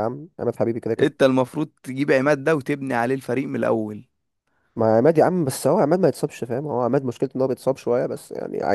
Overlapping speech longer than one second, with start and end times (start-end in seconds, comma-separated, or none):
none